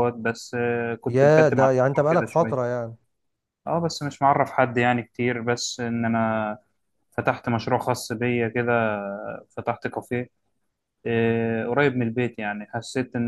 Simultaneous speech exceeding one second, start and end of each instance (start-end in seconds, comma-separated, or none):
1.1-2.7